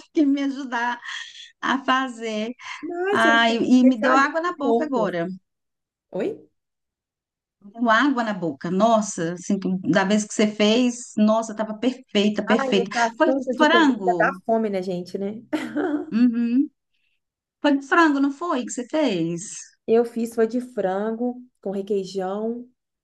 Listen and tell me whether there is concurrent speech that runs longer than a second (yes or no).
yes